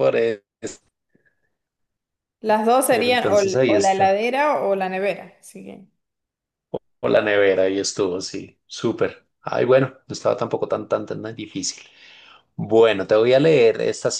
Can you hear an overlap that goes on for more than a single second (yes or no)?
yes